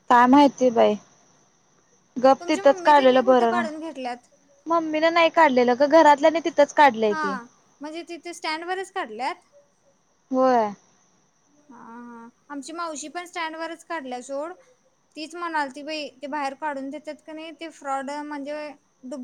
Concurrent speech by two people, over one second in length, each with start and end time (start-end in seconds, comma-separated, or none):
2.4-3.6